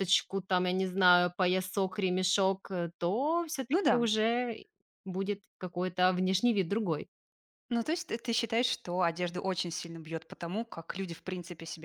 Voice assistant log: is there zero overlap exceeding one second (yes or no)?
yes